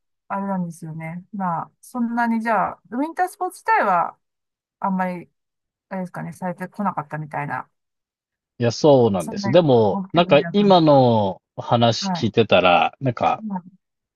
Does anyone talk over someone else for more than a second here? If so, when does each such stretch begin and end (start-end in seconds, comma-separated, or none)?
9.2-10.8